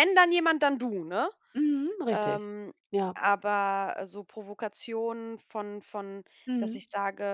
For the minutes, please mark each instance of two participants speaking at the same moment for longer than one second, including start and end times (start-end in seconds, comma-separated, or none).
none